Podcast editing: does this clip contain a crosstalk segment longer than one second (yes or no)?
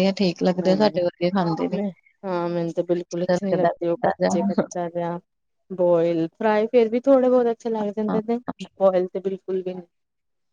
no